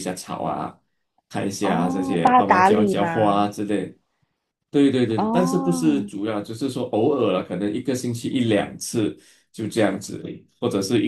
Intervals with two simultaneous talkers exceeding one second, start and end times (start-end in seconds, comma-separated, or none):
1.6-3.5